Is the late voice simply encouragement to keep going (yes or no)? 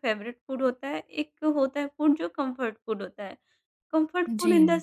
yes